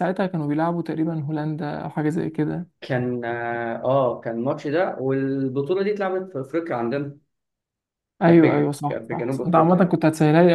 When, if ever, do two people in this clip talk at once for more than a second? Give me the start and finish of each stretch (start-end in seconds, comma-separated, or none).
8.3-9.9